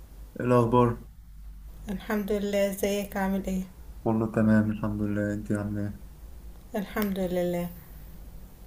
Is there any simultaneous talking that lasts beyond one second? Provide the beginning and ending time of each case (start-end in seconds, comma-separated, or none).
none